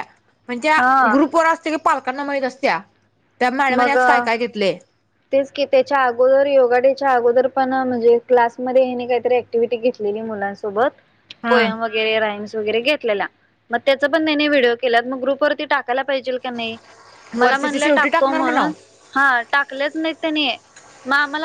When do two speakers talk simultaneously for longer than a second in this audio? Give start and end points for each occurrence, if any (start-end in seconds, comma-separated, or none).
17.4-18.7